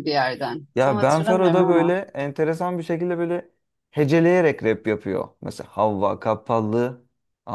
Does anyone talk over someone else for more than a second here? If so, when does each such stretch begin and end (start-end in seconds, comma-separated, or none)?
0.7-1.9